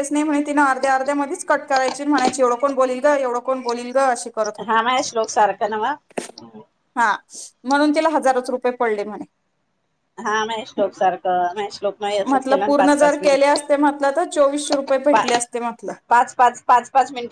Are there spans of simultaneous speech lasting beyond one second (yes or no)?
yes